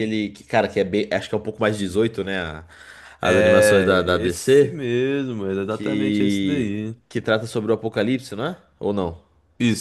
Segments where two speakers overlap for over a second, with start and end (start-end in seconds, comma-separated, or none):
3.2-4.8, 5.7-7.0